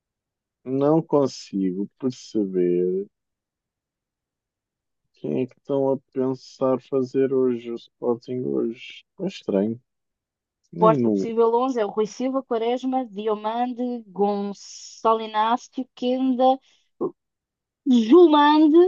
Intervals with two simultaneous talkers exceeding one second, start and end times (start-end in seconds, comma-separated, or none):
none